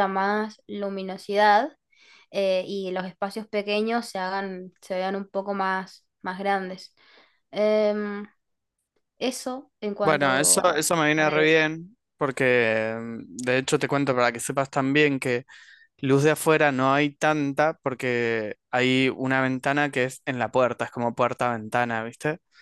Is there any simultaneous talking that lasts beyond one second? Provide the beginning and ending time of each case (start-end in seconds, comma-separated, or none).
10.0-11.6